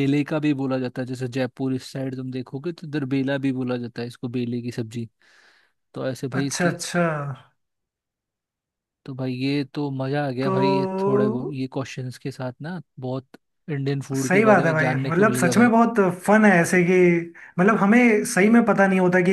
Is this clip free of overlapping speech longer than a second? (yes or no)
no